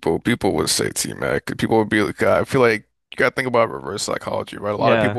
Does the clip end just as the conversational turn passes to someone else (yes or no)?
no